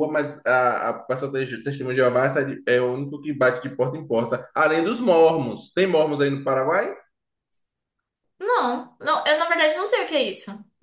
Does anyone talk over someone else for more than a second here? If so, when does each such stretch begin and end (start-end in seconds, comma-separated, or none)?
none